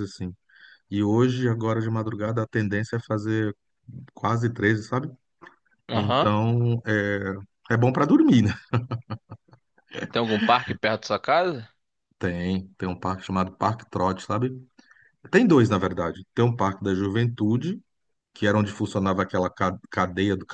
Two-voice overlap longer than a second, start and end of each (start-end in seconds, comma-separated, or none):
none